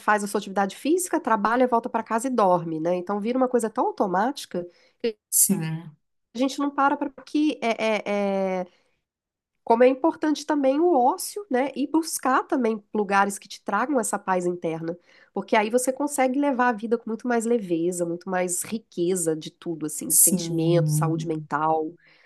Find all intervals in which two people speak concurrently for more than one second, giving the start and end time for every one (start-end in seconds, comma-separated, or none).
20.1-21.5